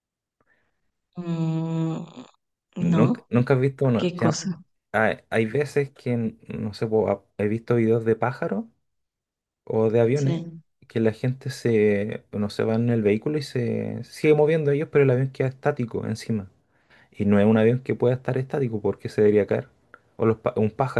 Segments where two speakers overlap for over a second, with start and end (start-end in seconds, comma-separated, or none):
none